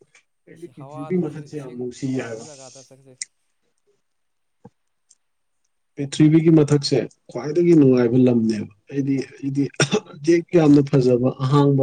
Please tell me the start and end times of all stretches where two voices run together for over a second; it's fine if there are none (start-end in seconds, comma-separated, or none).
0.6-2.5